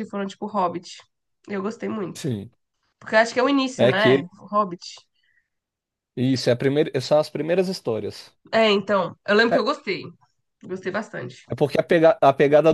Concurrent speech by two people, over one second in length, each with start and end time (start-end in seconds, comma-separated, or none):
none